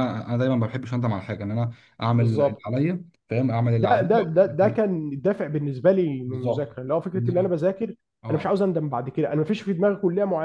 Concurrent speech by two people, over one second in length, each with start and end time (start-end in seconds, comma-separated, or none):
none